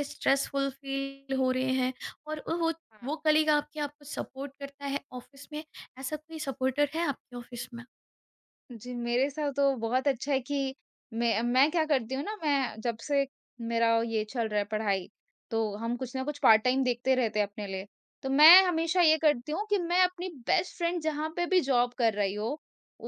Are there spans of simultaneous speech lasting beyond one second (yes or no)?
no